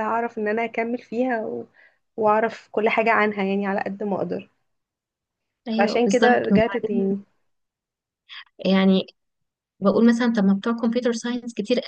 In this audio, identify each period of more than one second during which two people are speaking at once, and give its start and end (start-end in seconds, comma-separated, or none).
5.7-7.1